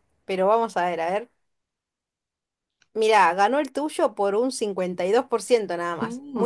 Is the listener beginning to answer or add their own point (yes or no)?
yes